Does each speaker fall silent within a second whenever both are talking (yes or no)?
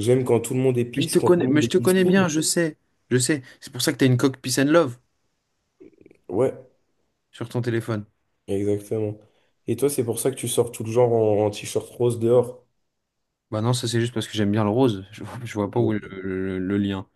no